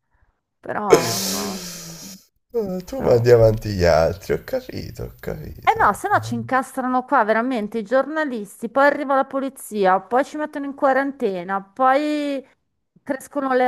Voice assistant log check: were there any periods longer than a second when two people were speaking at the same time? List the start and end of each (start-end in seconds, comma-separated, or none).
none